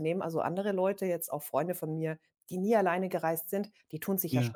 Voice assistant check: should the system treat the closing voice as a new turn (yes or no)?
no